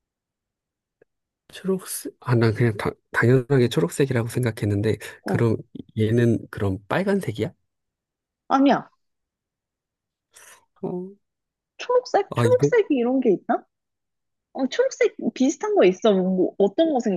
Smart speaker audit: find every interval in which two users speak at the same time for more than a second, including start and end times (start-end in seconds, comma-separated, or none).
none